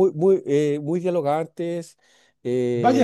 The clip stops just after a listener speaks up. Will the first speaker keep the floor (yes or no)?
no